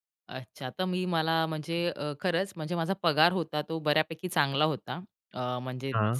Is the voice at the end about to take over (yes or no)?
no